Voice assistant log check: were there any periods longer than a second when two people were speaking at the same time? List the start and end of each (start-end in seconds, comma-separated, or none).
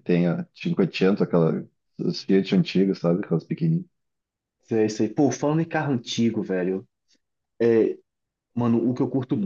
none